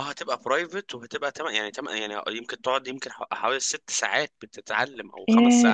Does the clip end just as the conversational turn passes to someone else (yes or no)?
yes